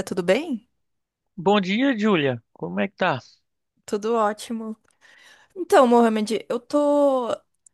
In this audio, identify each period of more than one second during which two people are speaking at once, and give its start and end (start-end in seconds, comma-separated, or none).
none